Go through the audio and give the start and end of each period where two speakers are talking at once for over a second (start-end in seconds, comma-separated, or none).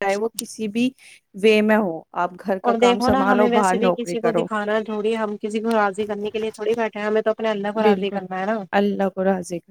2.7-4.4